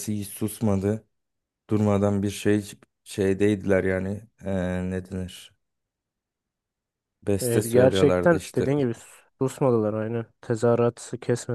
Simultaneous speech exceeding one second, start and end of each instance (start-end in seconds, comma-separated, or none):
7.4-8.7